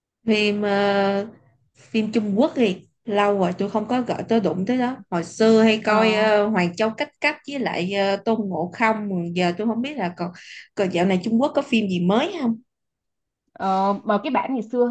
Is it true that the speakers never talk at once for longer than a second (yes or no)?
yes